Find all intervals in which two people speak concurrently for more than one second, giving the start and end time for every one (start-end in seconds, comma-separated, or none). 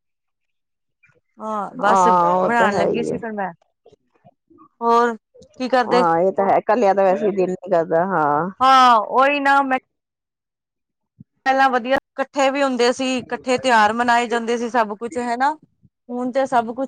1.9-3.2